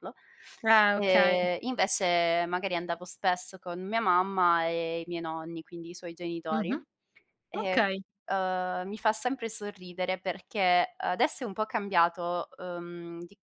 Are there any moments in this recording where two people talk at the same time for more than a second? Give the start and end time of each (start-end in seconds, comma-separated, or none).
none